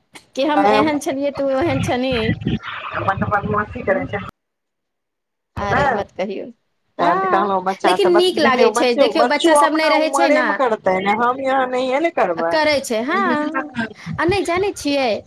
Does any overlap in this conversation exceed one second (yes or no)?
yes